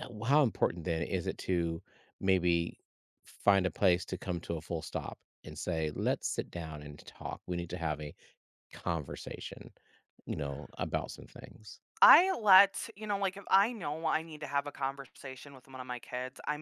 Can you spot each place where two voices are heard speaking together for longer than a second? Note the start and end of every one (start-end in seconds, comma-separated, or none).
none